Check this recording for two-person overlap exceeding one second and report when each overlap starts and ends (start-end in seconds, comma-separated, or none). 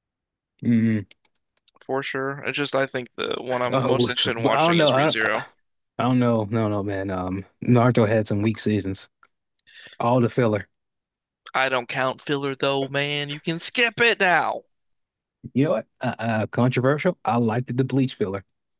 3.7-5.2